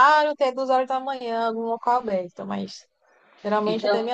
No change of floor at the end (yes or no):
yes